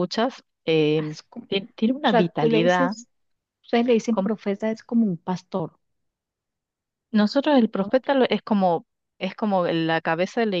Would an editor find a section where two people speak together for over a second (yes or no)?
yes